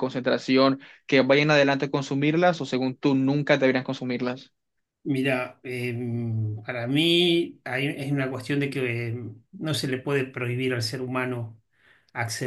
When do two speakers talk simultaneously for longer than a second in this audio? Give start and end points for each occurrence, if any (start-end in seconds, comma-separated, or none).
none